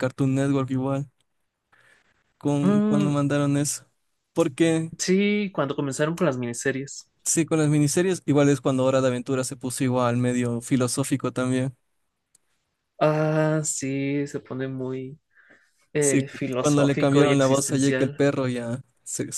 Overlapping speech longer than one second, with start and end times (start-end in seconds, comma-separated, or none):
16.0-18.2